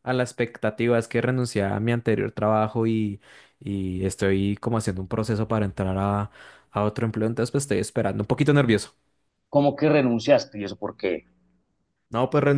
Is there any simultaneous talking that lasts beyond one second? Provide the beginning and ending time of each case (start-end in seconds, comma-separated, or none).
none